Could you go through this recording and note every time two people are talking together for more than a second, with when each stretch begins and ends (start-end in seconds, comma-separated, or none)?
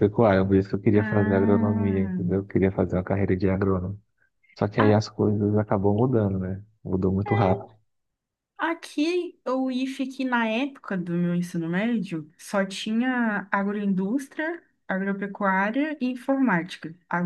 0.9-2.2